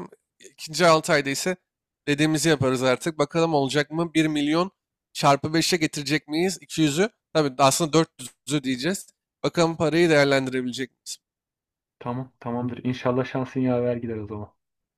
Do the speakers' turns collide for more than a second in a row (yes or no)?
no